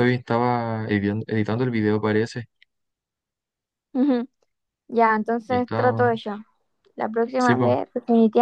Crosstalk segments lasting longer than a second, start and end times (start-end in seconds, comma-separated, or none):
none